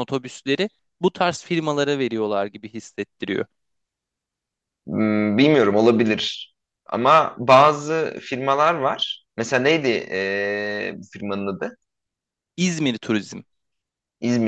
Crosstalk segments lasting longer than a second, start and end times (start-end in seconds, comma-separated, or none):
none